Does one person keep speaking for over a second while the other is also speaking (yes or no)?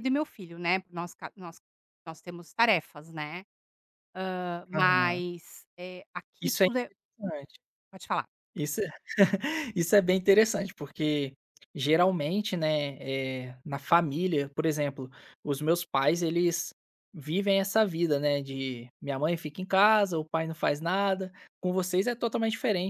no